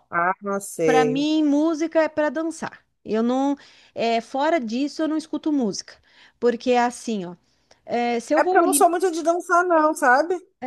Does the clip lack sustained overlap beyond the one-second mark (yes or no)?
yes